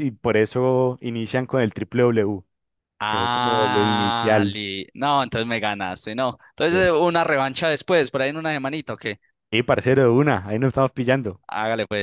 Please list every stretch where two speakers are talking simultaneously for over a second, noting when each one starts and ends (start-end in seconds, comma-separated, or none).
3.0-4.6